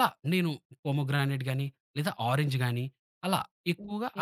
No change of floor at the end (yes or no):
no